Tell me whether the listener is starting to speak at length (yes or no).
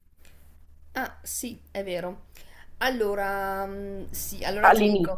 no